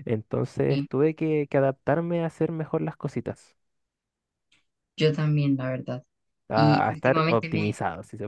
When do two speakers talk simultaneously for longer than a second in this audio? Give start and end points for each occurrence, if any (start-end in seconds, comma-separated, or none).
6.5-7.8